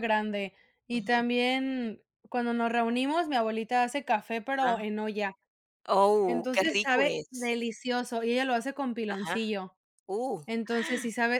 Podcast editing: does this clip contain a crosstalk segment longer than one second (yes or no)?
yes